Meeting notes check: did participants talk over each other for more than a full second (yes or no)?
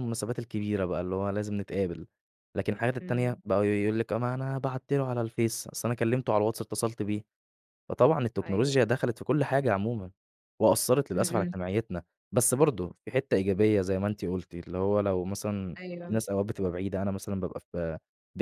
no